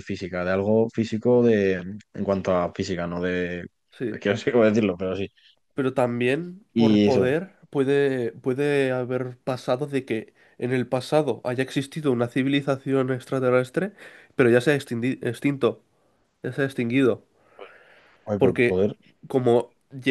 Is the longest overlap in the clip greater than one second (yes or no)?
no